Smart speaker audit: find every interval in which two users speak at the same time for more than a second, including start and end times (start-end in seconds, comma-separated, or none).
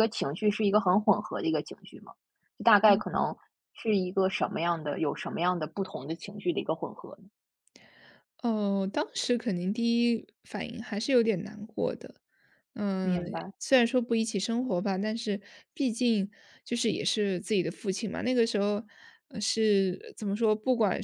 none